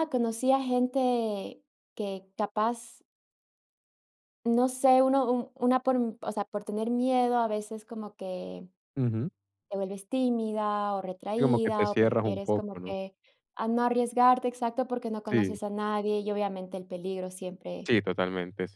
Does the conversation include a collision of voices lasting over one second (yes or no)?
yes